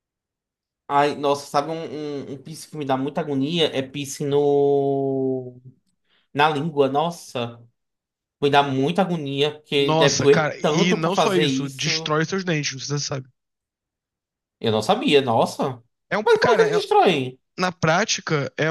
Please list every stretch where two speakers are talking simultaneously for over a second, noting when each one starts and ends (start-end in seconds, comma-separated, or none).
9.8-12.1